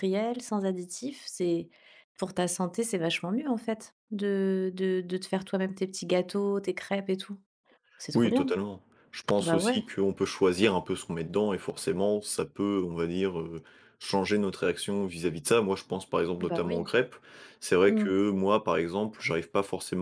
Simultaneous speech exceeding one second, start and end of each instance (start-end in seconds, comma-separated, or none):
none